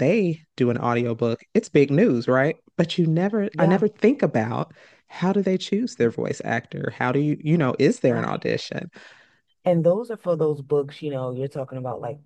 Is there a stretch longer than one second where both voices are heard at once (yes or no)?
no